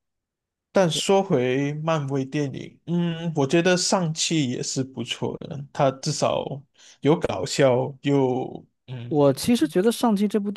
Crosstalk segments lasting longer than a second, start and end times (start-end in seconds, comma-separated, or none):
none